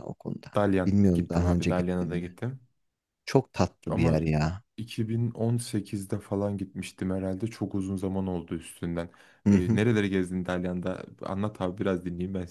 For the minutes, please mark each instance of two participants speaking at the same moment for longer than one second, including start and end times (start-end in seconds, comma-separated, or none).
0.5-2.3